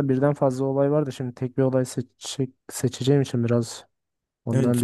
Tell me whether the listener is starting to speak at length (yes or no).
yes